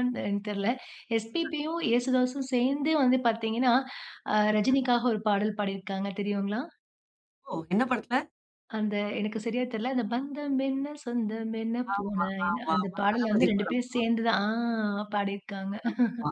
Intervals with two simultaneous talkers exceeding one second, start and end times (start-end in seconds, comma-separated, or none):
11.9-13.8